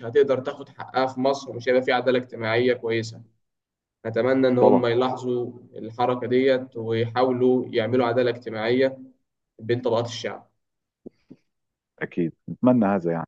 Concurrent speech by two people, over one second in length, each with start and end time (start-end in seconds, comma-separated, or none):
none